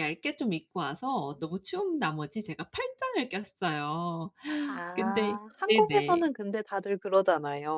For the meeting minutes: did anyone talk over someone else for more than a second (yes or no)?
yes